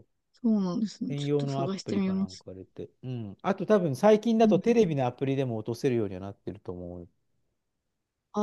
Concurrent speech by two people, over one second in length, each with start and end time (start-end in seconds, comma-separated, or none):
1.1-2.5